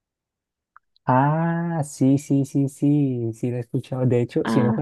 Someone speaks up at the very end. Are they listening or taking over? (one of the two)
listening